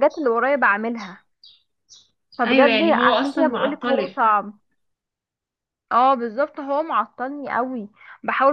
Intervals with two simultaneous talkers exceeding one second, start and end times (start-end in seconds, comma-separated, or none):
2.5-4.2